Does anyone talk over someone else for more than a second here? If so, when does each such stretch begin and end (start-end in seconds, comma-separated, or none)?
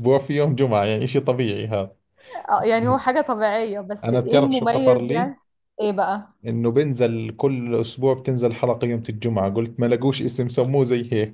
4.0-5.3